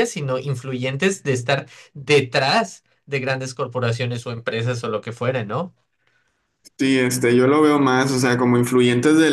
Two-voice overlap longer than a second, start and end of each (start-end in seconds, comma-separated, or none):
none